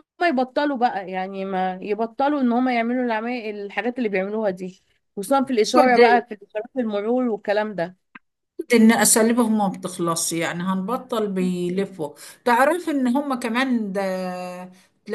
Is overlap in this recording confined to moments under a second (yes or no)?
yes